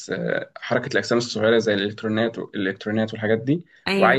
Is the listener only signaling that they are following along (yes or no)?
yes